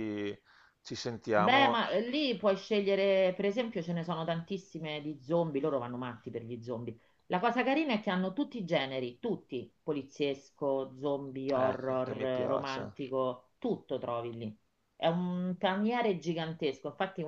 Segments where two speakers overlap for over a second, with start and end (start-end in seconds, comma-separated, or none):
11.5-13.0